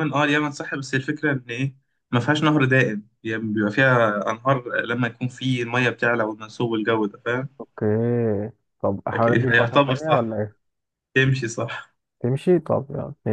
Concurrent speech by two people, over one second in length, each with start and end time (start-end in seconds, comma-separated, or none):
9.1-10.4